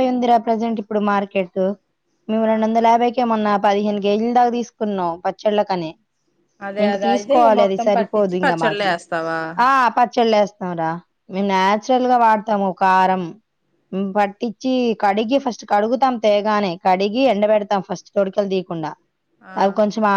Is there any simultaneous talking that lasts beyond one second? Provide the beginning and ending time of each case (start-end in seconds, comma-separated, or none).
6.9-8.9